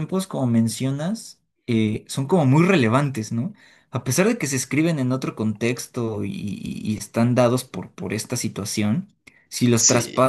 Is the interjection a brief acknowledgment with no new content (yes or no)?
yes